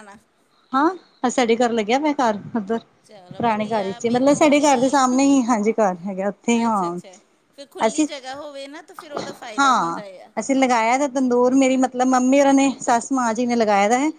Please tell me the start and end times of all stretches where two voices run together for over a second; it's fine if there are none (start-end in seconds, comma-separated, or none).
3.4-5.0